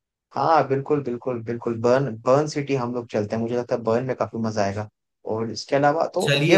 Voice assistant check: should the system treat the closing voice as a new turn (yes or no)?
no